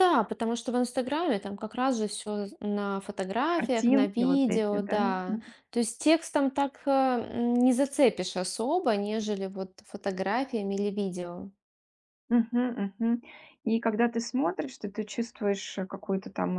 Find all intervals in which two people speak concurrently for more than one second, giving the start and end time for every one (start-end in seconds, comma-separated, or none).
3.5-5.4